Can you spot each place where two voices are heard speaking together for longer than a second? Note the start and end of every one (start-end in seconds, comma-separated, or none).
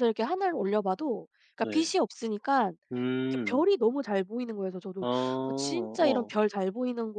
5.0-6.3